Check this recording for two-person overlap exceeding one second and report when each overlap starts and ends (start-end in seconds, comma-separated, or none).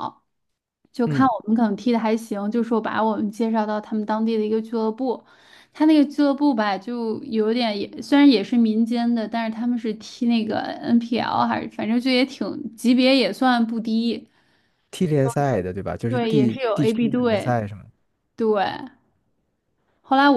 16.1-17.6